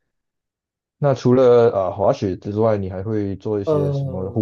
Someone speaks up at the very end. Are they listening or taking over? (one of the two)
taking over